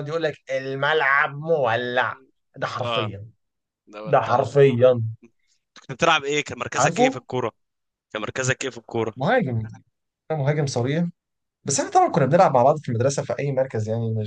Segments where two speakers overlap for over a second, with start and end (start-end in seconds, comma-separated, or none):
none